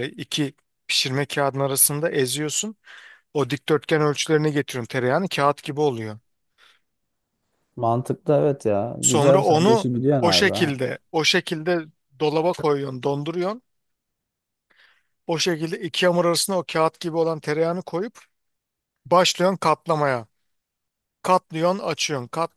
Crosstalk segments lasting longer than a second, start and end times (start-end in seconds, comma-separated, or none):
9.0-10.8